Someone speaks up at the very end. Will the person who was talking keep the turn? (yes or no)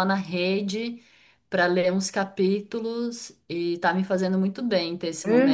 no